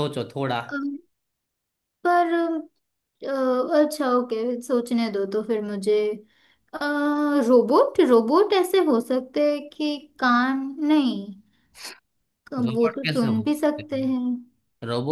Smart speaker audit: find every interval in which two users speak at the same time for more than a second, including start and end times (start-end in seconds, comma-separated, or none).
12.7-14.2